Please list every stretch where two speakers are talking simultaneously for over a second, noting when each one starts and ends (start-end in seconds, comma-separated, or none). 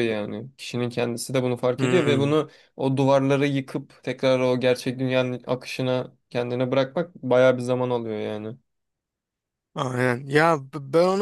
none